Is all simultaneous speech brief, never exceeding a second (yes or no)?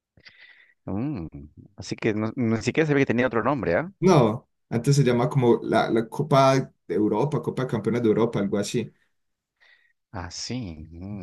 yes